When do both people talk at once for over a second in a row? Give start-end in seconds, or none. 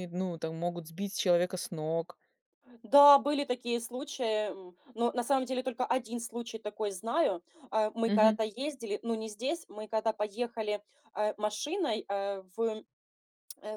none